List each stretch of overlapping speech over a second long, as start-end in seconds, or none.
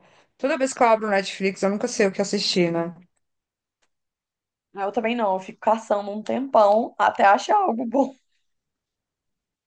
none